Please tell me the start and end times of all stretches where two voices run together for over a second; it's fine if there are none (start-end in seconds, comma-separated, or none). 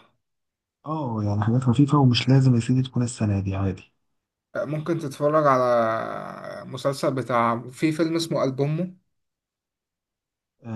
none